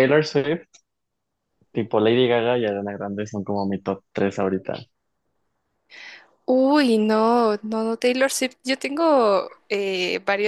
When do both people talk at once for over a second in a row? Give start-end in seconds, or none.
none